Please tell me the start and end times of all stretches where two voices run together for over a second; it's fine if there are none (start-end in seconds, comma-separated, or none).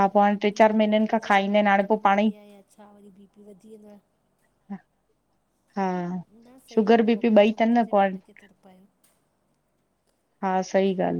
0.5-2.3